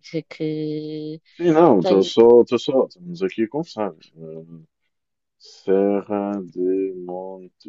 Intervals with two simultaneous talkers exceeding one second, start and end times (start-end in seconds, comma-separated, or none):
none